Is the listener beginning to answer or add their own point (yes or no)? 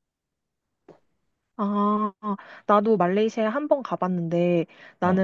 no